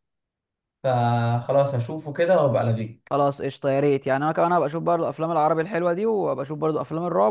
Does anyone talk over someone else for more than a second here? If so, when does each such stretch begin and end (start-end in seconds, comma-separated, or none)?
none